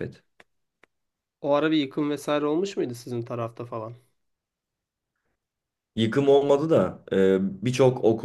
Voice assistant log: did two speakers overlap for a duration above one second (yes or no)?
no